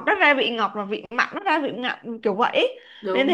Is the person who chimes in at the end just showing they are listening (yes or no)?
yes